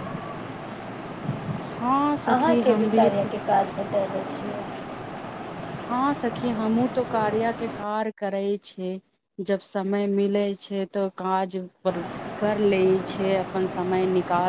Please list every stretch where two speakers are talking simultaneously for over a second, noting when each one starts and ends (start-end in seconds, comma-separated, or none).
none